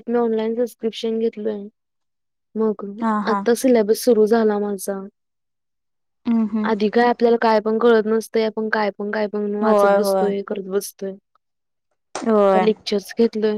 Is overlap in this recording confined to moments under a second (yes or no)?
yes